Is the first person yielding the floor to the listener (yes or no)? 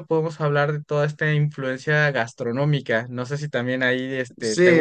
yes